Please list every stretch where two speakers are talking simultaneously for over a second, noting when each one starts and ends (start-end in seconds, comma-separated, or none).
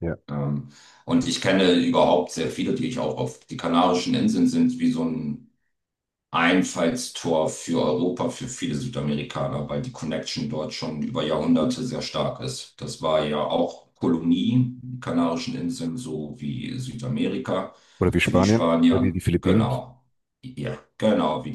18.2-19.7